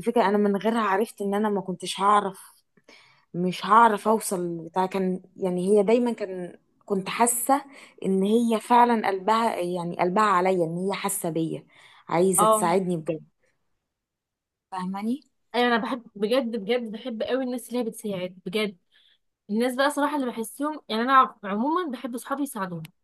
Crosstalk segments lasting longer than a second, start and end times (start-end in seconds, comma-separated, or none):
none